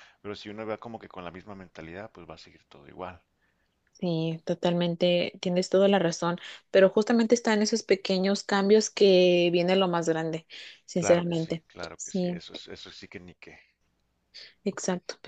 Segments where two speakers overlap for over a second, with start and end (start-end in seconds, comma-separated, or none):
10.9-12.4